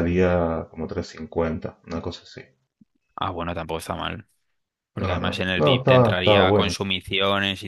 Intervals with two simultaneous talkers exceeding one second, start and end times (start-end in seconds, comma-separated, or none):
5.0-6.8